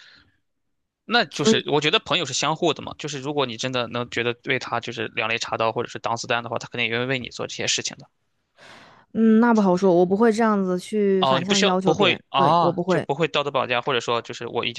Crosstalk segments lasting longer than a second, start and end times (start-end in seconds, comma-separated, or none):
11.2-13.1